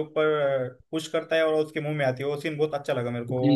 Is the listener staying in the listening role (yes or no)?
no